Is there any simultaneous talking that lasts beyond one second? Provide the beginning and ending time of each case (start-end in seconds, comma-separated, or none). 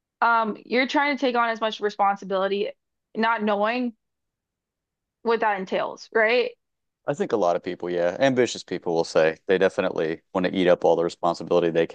none